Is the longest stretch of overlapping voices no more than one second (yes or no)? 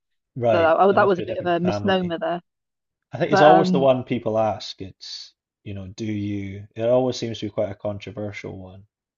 no